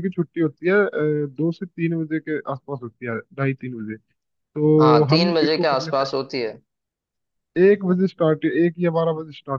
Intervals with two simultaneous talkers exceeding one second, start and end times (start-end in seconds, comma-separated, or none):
4.8-6.2